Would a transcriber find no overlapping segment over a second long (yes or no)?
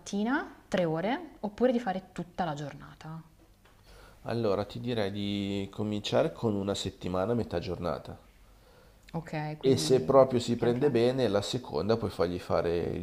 no